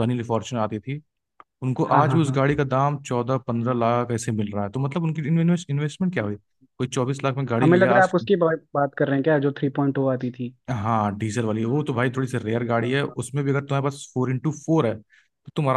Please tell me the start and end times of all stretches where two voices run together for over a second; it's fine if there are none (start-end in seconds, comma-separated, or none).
none